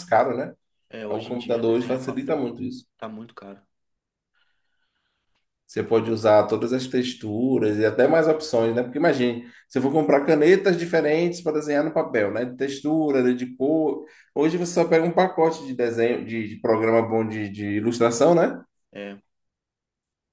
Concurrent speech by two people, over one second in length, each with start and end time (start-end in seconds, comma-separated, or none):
1.1-2.5